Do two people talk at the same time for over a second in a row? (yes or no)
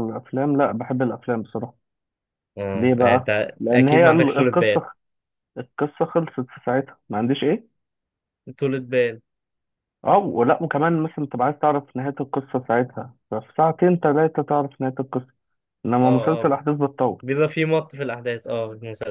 yes